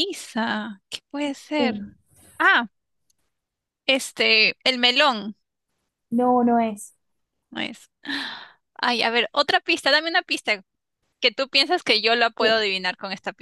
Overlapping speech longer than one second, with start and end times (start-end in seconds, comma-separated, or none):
none